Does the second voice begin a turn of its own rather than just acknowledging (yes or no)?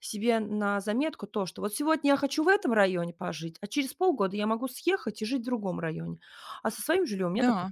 no